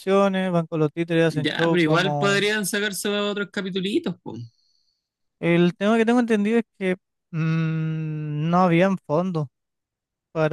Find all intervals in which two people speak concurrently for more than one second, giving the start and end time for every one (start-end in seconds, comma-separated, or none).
1.2-2.5